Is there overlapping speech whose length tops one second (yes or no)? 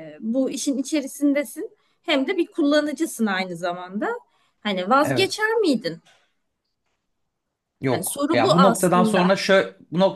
yes